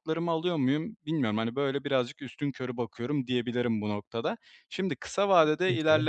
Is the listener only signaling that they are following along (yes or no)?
yes